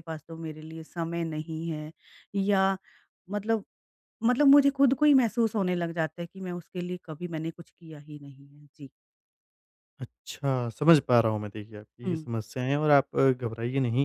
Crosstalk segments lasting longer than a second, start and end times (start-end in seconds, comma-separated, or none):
none